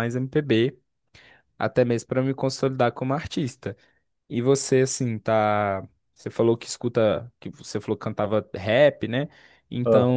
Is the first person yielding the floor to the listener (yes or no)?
no